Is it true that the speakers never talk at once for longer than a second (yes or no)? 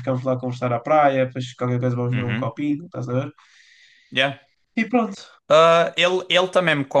yes